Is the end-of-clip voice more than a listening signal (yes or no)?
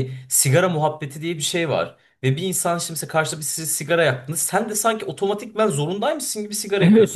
yes